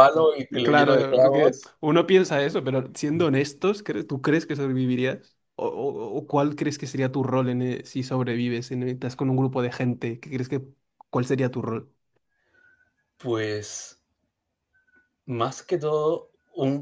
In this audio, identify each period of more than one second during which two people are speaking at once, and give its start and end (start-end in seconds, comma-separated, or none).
0.5-1.7